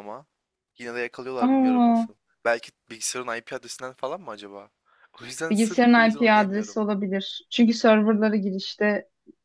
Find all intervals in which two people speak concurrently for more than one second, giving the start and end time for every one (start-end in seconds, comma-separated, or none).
5.5-6.8